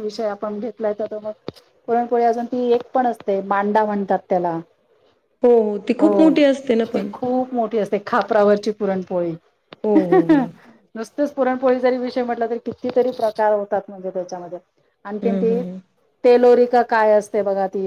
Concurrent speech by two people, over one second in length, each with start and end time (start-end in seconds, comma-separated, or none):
none